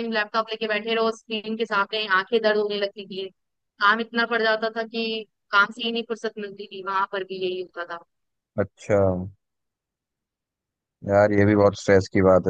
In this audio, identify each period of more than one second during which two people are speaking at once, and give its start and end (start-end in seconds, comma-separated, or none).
none